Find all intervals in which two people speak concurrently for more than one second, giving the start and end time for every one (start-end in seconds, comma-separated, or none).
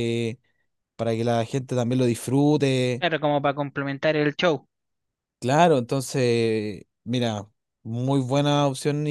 none